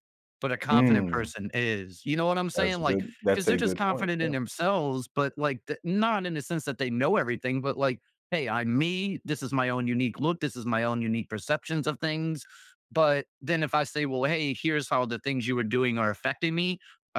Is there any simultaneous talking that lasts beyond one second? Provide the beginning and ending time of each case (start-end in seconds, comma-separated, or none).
2.5-4.3